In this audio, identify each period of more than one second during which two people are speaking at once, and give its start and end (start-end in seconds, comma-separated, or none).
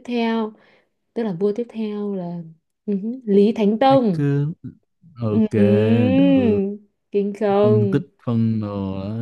none